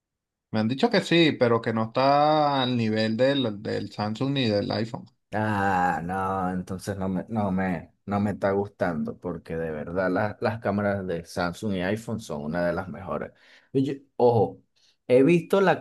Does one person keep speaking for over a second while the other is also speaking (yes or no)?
no